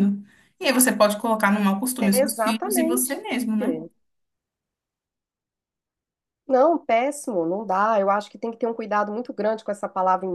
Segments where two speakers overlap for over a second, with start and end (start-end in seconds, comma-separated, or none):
2.0-3.2